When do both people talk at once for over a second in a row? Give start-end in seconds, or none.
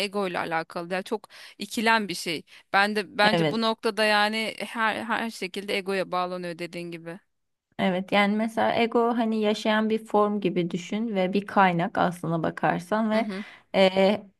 none